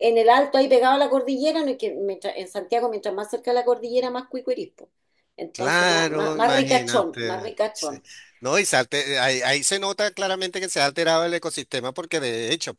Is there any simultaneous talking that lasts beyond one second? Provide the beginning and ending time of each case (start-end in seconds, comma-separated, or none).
5.5-8.0